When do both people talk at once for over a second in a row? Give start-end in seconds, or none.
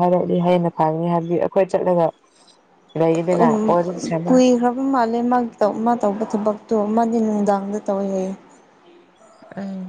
none